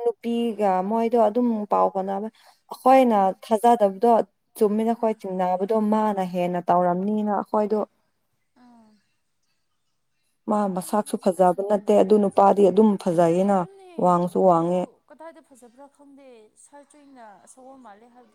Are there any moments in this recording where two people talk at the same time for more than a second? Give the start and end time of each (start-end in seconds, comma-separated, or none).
10.7-12.4